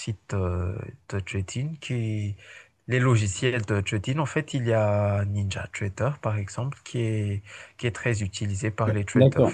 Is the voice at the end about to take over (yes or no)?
yes